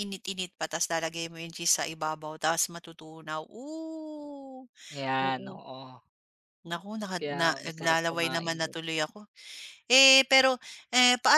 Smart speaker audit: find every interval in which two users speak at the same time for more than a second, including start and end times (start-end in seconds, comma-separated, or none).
7.2-8.8